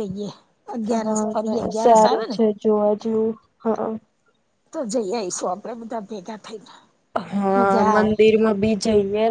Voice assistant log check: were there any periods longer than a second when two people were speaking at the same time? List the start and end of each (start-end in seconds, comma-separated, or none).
0.9-2.4